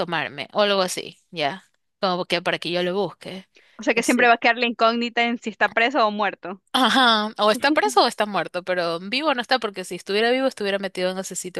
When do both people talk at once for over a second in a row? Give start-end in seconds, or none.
none